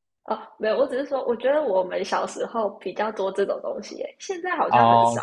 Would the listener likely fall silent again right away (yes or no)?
no